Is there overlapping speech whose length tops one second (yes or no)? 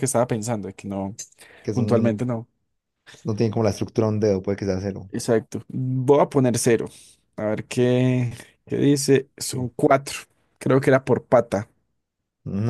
no